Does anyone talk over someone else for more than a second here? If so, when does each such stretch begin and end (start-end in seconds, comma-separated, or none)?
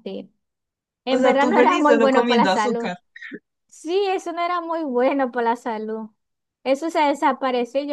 1.1-2.9